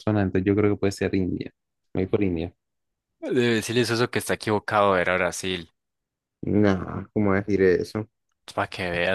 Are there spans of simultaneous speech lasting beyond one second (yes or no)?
no